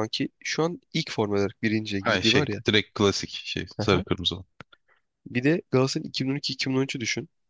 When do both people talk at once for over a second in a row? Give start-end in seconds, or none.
none